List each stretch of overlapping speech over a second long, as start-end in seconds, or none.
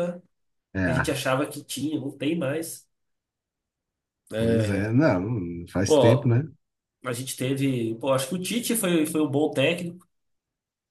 none